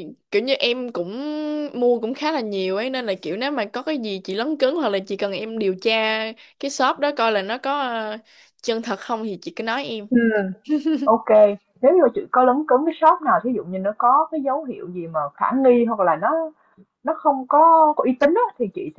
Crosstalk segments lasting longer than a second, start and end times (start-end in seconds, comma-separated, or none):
none